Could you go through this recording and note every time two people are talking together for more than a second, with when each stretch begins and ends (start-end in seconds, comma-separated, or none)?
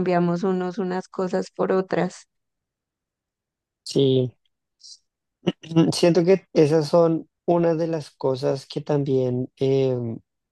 none